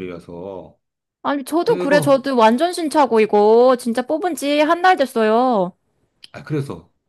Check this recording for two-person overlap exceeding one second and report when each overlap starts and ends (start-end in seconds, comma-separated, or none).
none